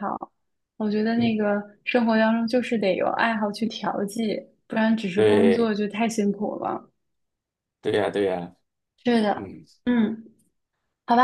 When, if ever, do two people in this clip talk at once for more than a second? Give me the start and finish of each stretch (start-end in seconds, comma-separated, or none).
none